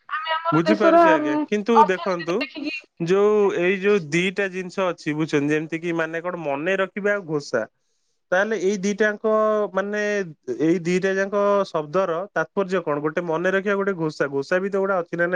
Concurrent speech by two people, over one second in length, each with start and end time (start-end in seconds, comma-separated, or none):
0.6-2.3